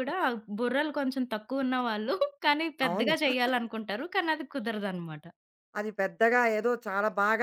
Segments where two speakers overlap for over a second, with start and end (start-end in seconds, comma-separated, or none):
none